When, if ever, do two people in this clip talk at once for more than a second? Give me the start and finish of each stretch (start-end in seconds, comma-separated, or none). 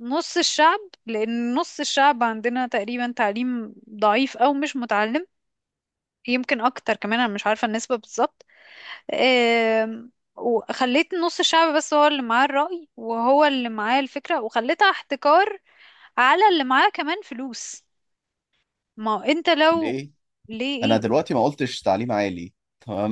none